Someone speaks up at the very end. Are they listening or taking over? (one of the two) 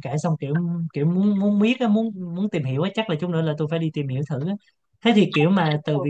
listening